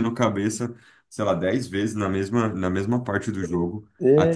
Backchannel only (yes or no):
yes